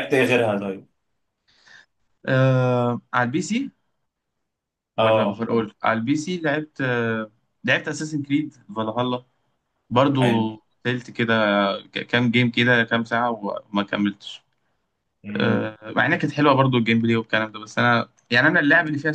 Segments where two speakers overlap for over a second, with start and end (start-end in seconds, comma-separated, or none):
none